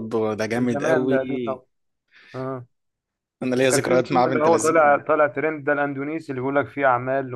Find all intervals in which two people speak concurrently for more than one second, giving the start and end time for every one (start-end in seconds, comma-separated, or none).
3.6-5.1